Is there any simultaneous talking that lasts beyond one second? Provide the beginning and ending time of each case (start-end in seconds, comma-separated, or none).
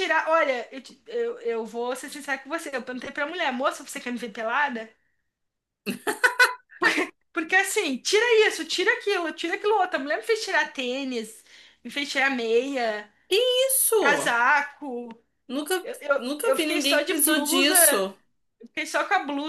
15.8-17.8